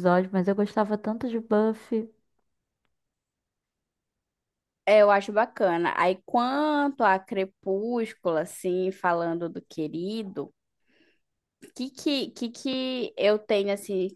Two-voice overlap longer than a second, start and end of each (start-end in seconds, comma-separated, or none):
none